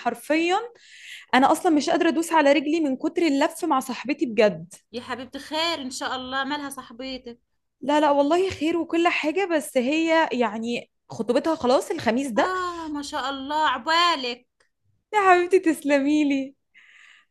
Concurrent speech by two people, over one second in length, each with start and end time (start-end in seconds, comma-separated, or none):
none